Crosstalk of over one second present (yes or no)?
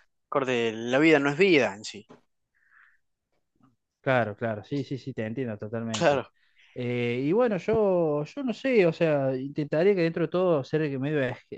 no